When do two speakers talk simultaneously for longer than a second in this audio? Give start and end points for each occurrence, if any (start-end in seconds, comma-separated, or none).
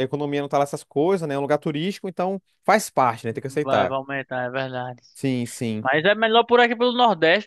none